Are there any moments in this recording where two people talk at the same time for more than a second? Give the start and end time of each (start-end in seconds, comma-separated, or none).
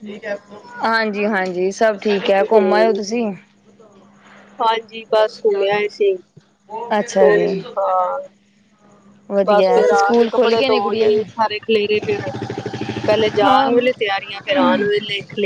9.4-11.2